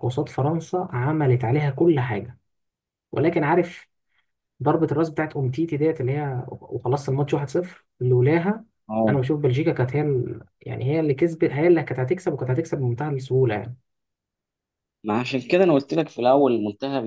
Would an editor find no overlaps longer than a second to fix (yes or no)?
yes